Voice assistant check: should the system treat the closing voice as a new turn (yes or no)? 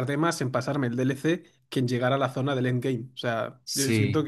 no